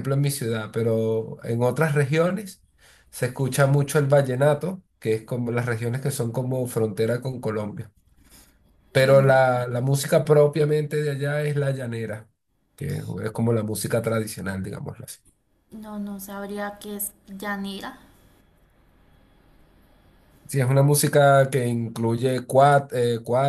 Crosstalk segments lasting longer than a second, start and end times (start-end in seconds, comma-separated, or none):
none